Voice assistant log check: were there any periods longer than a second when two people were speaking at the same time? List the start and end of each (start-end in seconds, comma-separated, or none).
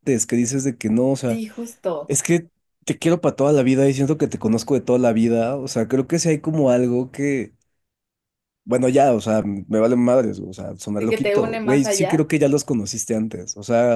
11.0-12.2